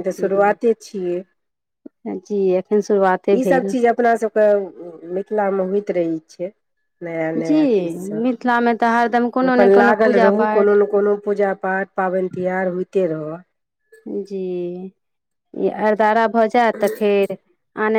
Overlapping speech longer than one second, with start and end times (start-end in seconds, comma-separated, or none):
8.2-10.8